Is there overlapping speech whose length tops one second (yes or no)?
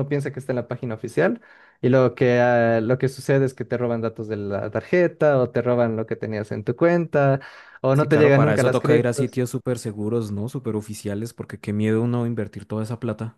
yes